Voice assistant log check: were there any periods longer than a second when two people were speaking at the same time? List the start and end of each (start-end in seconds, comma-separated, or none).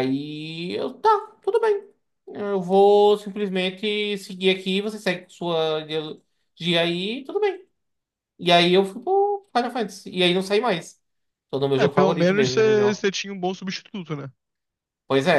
11.8-13.0